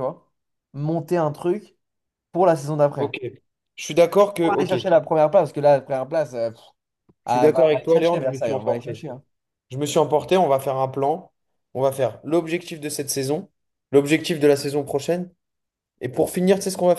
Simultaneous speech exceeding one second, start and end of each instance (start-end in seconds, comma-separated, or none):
7.3-9.0